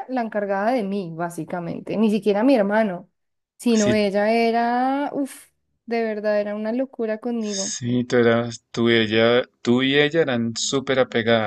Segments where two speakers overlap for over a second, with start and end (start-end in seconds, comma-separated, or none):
none